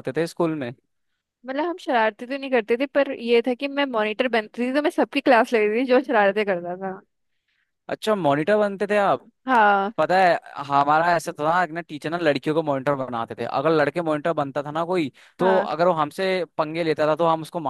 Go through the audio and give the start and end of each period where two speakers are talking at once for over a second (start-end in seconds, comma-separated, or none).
none